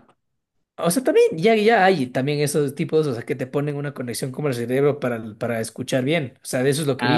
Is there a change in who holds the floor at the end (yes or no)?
yes